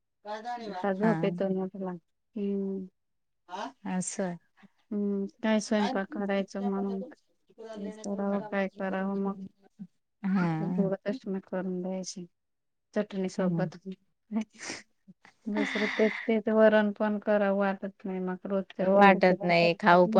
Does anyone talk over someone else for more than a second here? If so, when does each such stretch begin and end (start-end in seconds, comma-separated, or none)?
none